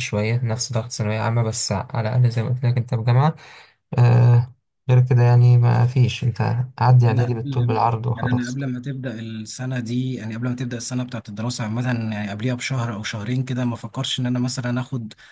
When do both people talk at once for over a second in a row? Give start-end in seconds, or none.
7.1-8.6